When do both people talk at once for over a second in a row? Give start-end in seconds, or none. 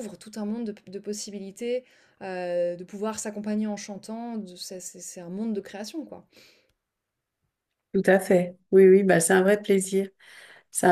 none